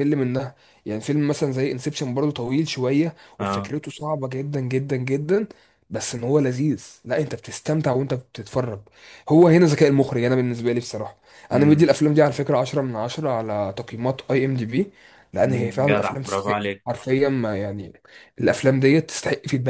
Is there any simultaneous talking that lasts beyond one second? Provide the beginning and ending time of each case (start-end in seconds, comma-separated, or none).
15.4-17.0